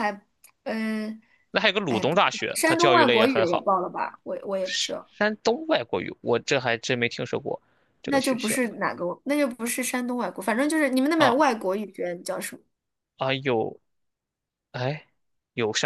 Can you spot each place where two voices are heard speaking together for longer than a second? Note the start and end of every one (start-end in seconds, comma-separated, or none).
1.9-3.7